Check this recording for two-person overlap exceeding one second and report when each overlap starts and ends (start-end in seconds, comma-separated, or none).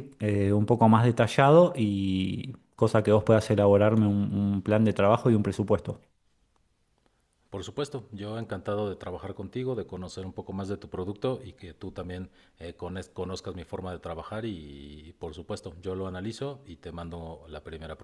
none